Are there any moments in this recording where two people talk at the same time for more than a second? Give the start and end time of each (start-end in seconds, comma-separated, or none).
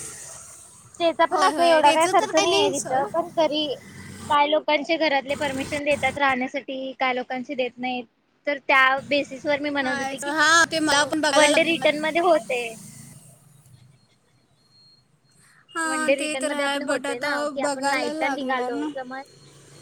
1.3-3.0, 15.9-18.9